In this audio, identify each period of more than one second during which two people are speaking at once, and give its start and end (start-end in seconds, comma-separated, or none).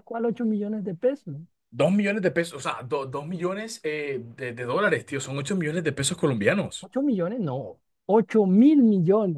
none